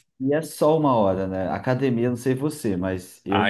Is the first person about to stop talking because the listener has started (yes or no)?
yes